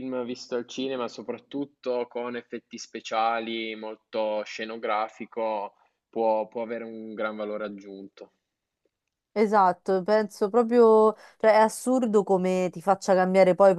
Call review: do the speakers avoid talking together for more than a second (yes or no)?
yes